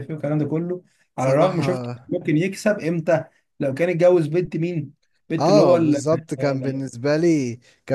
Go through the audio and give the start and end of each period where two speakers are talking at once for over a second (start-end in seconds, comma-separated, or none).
5.4-6.9